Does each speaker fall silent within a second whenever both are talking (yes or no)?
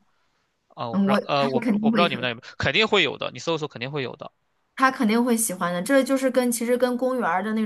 no